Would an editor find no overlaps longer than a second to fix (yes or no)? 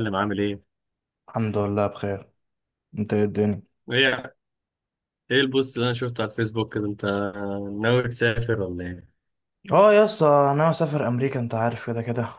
yes